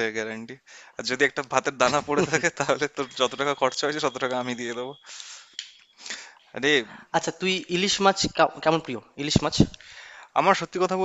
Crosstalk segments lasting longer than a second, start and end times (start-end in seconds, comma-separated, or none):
none